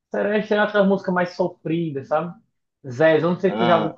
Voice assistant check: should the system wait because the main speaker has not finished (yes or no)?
yes